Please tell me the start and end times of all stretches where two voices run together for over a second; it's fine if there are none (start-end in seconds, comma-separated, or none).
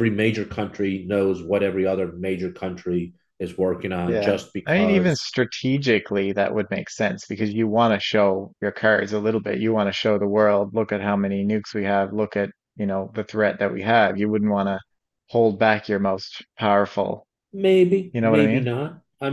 4.0-5.3